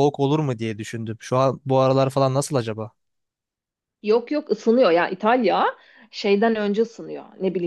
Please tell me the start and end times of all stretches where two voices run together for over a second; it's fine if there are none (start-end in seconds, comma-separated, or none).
none